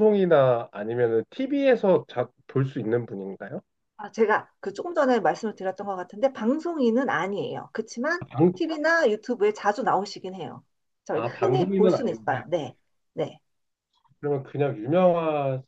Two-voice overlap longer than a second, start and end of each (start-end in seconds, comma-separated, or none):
11.1-12.3